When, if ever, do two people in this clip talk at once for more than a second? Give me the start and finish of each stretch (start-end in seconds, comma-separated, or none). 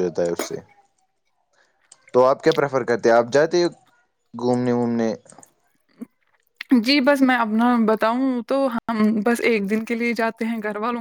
none